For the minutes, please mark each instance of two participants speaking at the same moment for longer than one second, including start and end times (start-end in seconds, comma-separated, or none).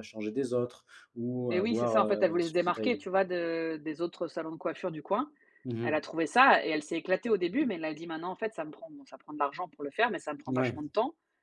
1.5-3.2